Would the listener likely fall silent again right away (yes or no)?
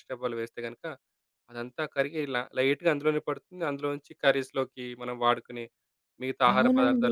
no